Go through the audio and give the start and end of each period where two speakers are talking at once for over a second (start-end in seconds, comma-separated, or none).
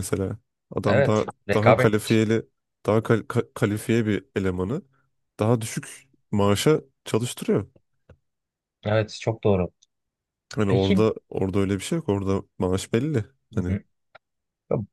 0.8-2.2